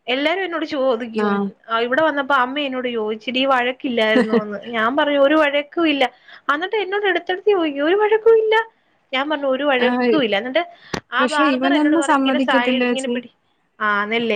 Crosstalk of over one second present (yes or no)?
yes